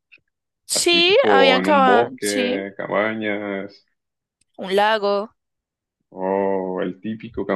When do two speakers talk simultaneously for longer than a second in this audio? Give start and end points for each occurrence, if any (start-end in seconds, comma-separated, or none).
0.7-2.6